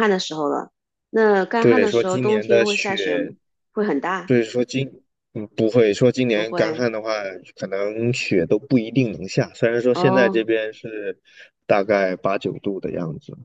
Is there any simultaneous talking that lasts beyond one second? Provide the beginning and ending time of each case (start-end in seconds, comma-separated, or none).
1.6-3.3